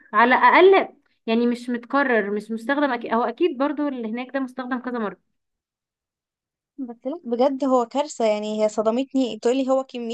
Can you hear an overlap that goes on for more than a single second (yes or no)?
no